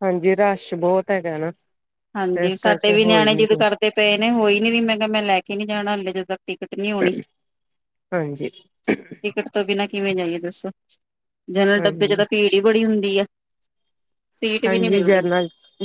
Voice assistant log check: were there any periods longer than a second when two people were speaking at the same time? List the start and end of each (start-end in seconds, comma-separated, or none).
2.2-3.6